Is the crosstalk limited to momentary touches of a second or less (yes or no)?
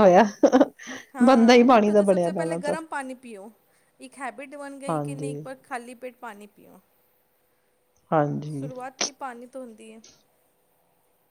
no